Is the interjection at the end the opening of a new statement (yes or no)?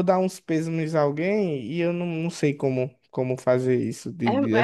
yes